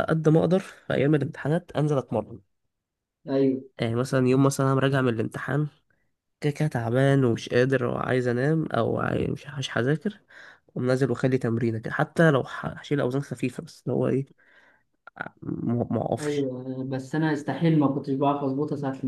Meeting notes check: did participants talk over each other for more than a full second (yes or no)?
no